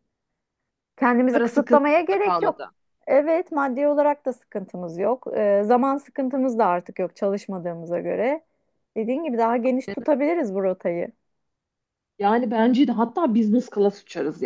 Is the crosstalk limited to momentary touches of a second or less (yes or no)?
no